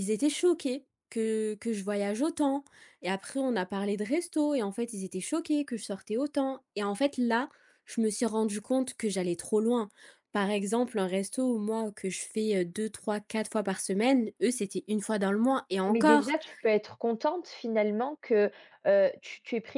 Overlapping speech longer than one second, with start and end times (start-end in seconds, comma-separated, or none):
none